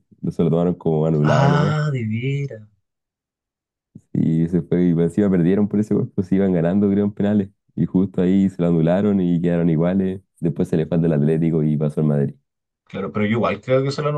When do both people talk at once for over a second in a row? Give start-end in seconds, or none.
none